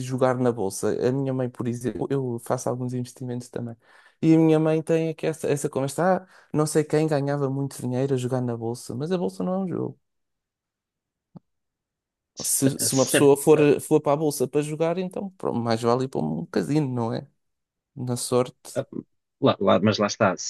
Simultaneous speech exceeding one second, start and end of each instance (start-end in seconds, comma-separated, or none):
none